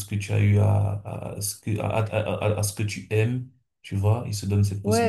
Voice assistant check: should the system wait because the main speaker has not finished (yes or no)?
no